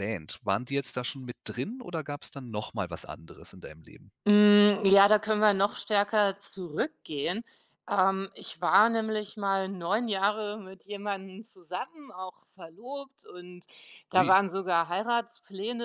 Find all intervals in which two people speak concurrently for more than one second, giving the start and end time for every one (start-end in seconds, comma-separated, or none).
none